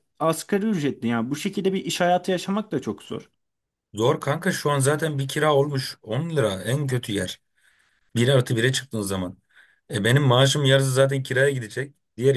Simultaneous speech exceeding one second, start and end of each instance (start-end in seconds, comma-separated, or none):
none